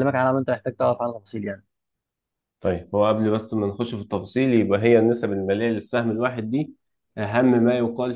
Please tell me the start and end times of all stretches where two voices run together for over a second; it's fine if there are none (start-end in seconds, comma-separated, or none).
none